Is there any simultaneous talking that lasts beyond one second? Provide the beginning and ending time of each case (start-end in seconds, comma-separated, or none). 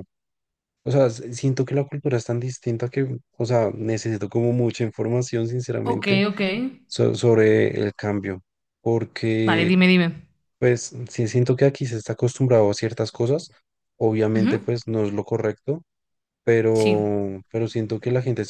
none